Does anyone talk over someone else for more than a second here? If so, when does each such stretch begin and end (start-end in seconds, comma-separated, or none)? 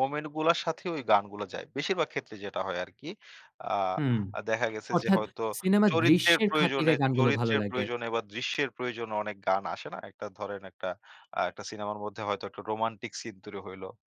5.9-7.8